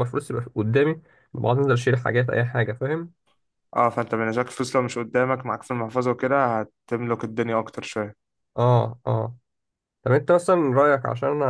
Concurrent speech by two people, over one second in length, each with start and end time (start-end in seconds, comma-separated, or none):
none